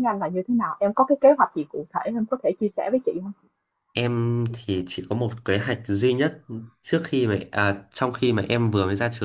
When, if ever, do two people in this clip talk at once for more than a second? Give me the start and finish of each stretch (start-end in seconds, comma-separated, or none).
none